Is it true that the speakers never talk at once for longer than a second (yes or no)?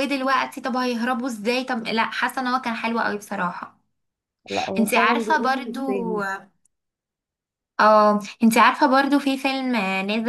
no